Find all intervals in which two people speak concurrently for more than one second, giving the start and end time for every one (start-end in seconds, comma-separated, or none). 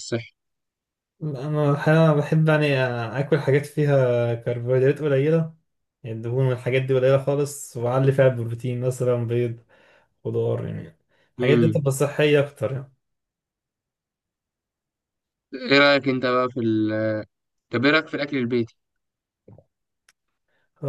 none